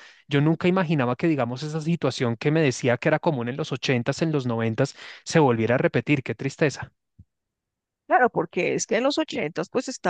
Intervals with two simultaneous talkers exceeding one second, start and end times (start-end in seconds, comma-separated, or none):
none